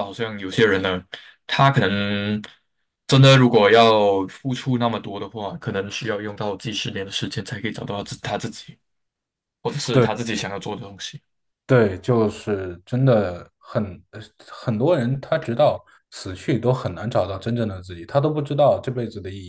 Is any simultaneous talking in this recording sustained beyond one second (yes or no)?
no